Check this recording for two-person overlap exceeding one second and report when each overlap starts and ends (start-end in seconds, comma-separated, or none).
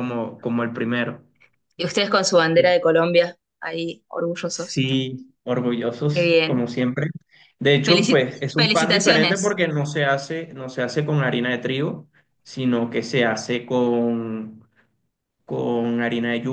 7.8-9.6